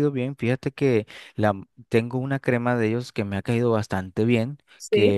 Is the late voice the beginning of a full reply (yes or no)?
no